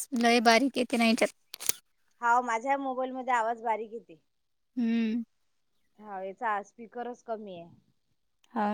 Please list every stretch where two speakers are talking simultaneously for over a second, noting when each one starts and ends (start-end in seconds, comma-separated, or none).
none